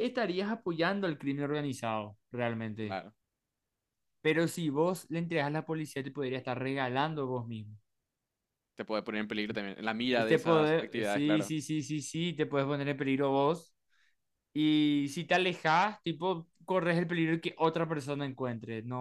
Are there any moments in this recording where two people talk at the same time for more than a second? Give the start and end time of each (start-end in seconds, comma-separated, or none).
10.1-11.5